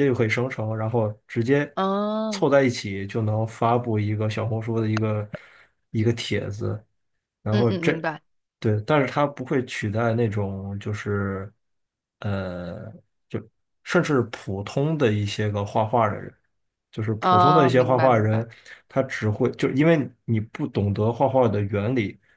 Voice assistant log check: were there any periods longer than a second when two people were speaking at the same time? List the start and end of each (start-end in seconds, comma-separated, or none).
17.2-18.4